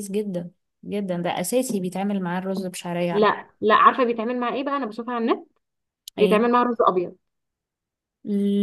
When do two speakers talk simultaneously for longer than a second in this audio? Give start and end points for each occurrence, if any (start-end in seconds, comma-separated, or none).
none